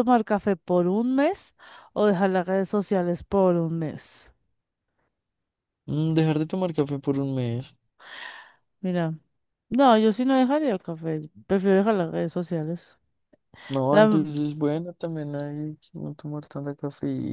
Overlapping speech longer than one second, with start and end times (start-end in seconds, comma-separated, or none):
none